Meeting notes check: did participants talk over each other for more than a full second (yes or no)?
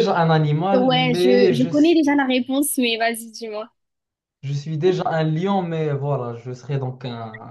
yes